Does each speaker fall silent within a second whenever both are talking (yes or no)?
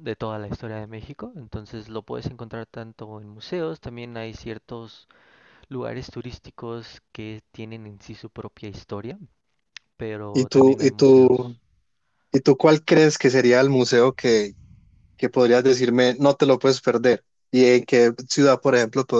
no